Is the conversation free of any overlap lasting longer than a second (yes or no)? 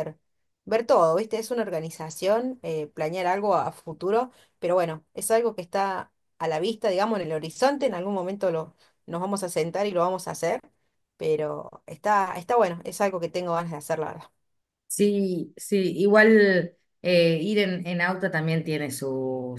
yes